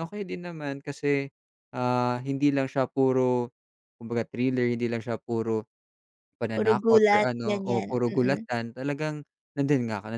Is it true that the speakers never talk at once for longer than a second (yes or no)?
no